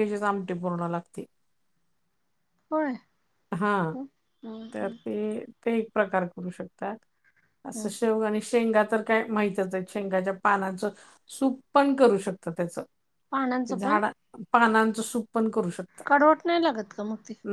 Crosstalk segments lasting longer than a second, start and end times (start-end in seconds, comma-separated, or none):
none